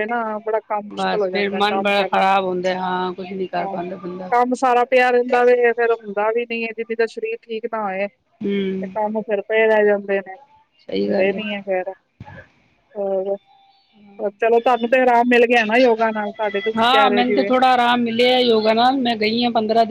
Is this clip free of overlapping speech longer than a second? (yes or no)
no